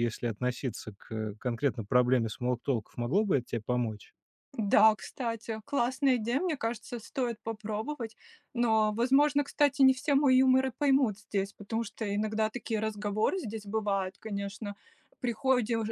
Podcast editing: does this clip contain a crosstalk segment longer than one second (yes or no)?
no